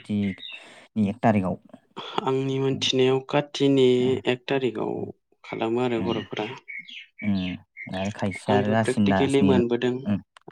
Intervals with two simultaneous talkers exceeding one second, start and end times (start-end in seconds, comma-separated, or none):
8.5-9.9